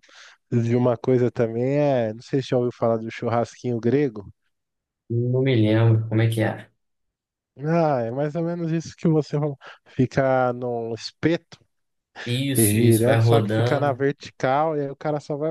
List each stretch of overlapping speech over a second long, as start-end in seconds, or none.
12.6-14.0